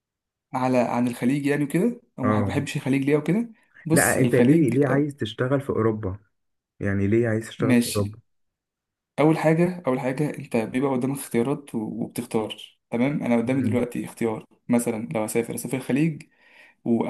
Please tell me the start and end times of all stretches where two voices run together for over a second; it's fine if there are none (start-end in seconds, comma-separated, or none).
3.9-5.1